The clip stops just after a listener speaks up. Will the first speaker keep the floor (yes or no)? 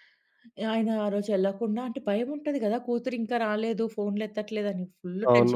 no